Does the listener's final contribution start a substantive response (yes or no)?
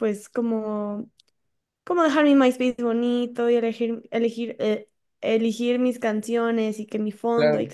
no